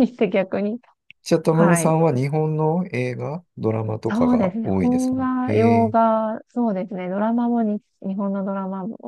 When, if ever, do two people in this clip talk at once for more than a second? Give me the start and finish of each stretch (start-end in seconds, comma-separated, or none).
4.1-6.0